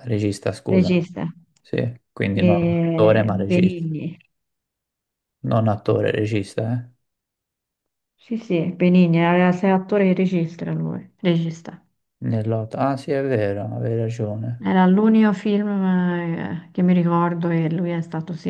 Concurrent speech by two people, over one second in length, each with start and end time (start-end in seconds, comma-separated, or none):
2.3-3.9